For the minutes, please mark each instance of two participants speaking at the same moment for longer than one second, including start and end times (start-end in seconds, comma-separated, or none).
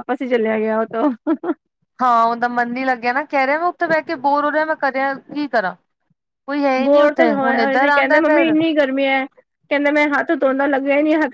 6.8-8.6